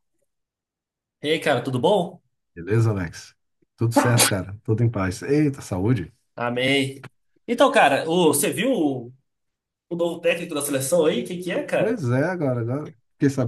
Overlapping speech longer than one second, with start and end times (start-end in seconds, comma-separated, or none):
none